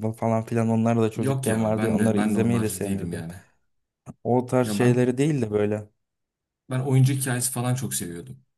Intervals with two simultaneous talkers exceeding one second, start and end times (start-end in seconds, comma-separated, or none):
1.1-3.2